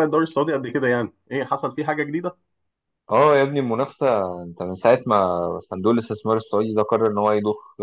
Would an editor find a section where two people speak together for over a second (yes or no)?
no